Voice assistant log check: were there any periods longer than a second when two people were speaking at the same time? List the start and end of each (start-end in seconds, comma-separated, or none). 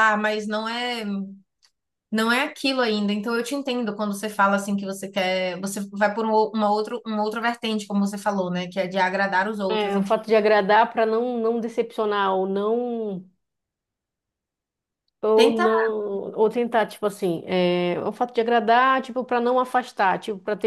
none